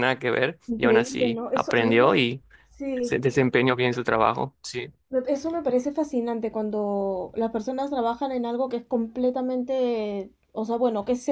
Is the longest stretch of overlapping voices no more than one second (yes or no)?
no